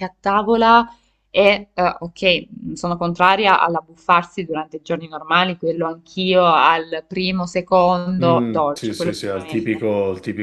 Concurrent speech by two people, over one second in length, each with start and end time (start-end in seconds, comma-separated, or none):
8.2-9.8